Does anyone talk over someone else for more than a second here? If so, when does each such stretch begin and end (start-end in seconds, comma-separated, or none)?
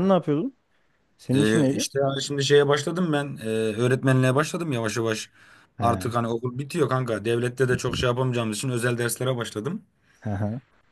none